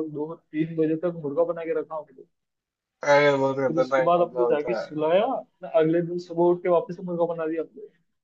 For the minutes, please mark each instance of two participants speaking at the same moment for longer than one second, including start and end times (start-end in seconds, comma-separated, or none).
3.5-4.8